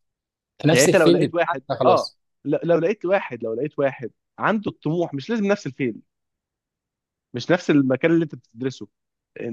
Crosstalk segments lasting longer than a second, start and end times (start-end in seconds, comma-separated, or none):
0.7-2.2